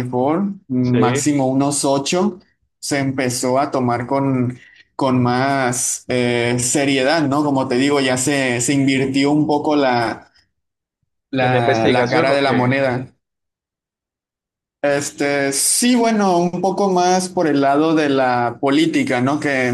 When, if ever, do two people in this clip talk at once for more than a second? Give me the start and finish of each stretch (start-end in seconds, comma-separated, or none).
11.4-12.7